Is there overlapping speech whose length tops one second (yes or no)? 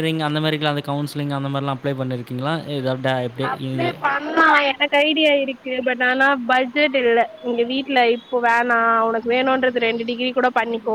no